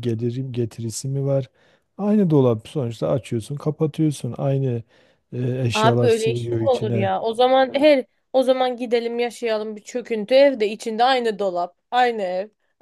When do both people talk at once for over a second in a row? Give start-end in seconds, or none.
5.7-7.1